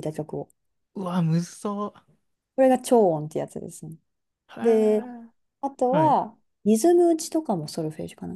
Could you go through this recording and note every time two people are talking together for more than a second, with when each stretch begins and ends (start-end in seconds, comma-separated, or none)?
none